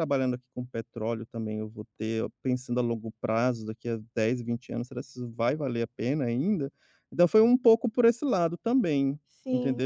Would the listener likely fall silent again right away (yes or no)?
no